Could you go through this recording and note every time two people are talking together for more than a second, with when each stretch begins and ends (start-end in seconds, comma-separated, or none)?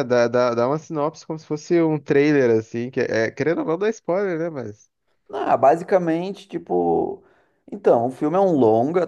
none